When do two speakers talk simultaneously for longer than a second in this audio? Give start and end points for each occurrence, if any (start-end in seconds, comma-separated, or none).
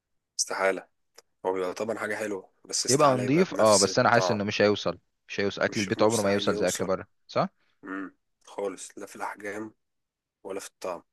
2.9-4.4, 5.7-6.9